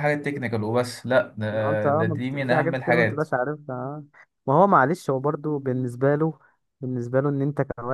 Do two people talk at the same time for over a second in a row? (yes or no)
yes